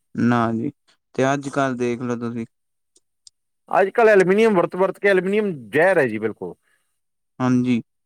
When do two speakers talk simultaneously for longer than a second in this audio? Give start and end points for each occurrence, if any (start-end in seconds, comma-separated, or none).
none